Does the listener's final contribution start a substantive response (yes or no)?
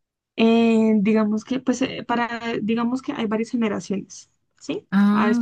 no